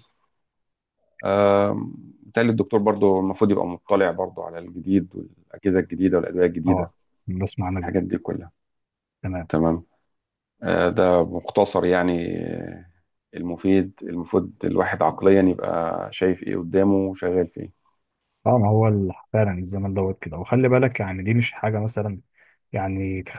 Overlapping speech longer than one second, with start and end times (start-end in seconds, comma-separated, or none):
none